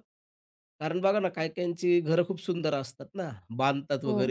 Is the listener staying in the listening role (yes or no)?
yes